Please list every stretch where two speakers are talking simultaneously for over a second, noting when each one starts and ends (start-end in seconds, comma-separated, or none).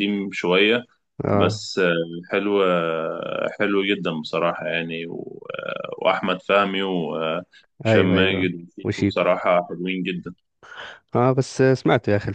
7.9-9.3